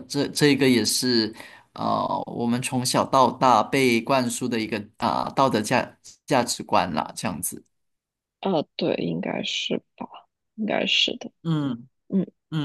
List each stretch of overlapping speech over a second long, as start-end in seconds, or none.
none